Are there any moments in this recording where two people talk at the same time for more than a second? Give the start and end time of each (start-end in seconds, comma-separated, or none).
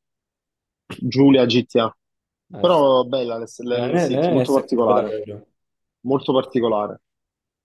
3.5-5.2